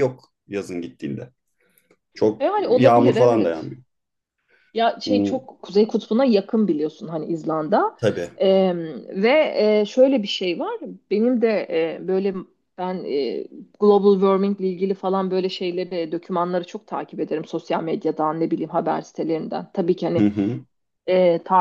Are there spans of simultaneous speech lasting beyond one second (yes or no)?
yes